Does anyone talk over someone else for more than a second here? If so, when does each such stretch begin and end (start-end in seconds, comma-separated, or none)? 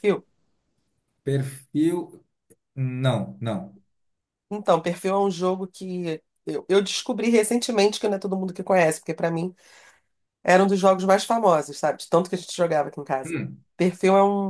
none